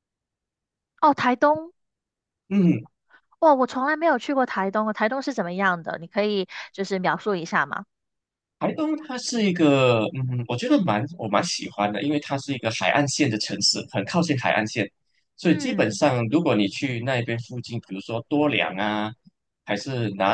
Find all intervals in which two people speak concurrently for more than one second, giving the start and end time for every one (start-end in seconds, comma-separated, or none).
none